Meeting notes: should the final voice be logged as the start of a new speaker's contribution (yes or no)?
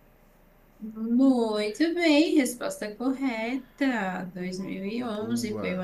no